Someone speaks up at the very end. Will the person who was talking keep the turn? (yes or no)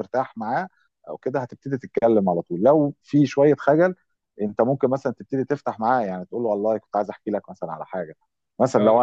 yes